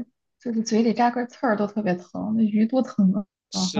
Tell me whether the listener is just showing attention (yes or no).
no